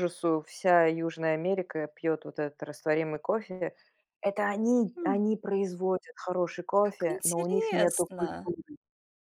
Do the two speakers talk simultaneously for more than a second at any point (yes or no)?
yes